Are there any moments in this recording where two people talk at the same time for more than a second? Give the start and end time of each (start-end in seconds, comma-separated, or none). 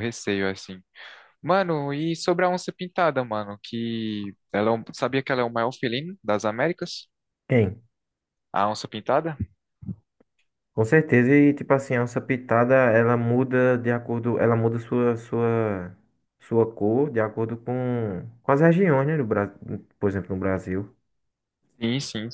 none